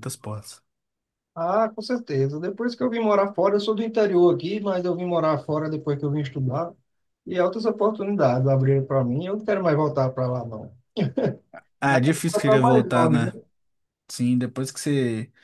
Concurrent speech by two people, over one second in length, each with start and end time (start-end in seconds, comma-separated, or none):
11.9-13.3